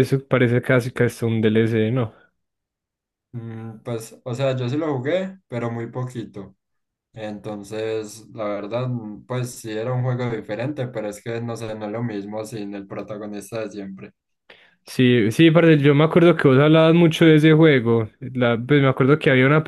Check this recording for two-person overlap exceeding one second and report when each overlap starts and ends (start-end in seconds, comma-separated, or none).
none